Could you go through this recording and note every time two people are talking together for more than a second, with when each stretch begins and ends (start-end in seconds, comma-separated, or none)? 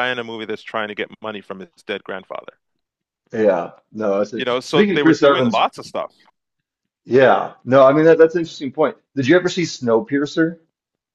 4.3-5.6